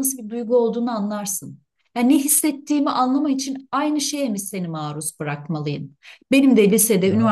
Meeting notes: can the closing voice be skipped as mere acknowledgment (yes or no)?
yes